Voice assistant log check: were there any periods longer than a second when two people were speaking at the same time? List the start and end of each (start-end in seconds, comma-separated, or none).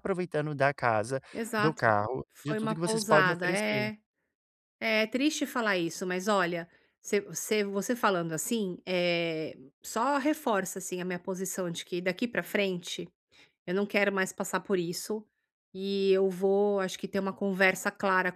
1.6-3.9